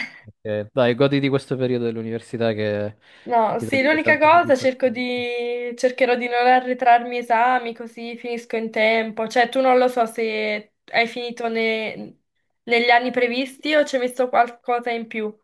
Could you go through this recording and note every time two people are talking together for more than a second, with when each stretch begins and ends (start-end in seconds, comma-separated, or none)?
3.6-5.1